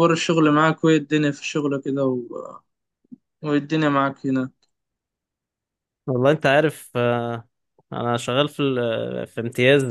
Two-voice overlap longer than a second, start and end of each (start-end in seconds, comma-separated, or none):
none